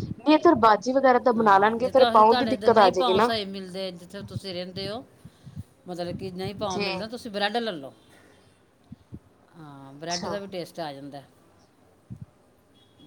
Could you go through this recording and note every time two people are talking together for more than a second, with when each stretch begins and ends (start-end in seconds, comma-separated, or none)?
1.4-3.3